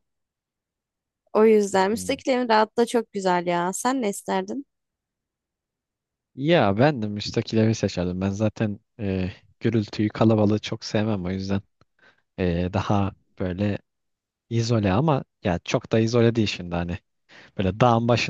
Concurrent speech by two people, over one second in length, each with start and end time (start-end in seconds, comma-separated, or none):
none